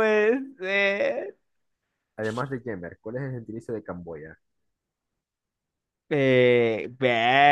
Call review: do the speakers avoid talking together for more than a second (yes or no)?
yes